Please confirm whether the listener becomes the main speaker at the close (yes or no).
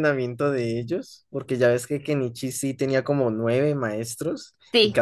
no